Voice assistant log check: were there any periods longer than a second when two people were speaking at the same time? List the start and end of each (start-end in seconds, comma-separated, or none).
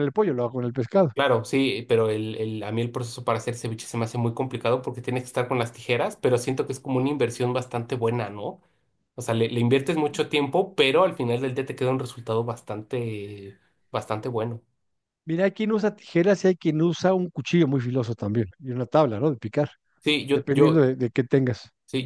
none